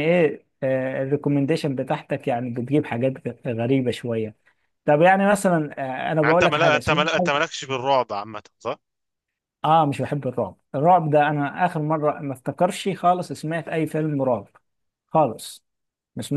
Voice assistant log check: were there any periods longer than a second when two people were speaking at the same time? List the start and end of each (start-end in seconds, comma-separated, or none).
6.2-7.4